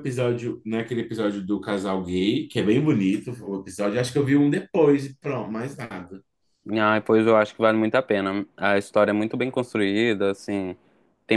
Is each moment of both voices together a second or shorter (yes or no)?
yes